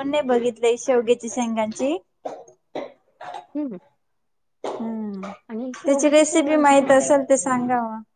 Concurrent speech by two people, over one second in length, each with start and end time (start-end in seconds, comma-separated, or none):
5.8-7.1